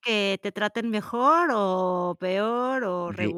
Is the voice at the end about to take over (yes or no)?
yes